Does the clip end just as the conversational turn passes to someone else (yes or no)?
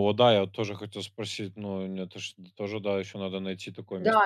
yes